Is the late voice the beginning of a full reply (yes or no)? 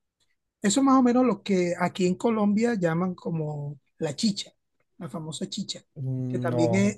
no